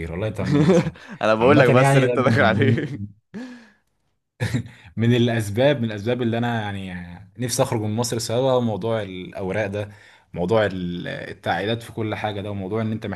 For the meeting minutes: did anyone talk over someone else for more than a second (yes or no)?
yes